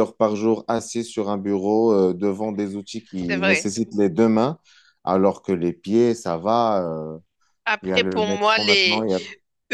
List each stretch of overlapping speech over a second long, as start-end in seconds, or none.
7.8-9.1